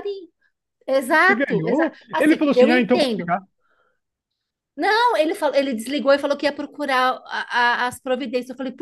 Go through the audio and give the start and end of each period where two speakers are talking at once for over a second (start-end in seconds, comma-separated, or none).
1.2-3.3